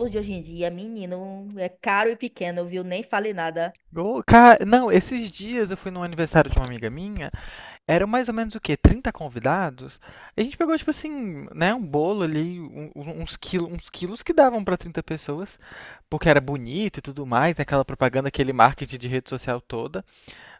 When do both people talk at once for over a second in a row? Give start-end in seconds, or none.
none